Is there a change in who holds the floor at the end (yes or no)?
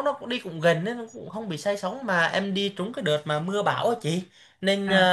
no